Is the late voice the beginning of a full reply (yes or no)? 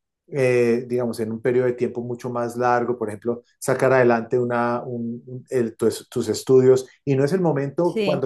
no